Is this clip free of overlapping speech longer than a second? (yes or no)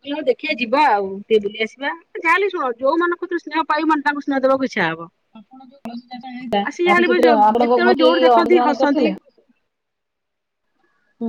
no